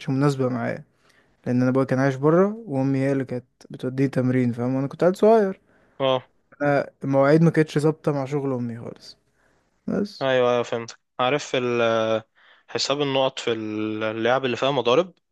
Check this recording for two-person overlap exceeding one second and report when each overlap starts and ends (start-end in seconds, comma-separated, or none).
none